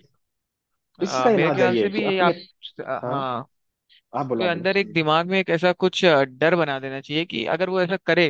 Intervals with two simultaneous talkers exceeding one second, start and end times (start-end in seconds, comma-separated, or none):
1.0-2.3